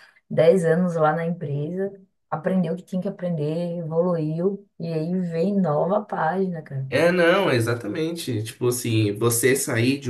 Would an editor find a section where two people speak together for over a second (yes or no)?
no